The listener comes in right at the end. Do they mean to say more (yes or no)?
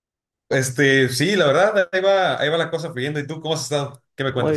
yes